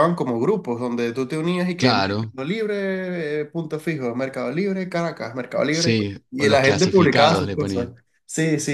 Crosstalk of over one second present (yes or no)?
yes